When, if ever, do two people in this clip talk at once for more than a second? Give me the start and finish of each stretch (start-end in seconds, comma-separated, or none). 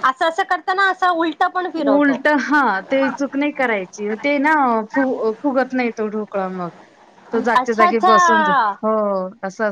7.3-8.7